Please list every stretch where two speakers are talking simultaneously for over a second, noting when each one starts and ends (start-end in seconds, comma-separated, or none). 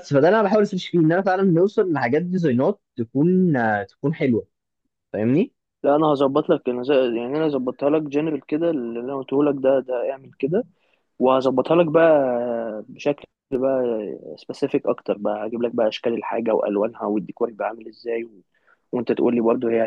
none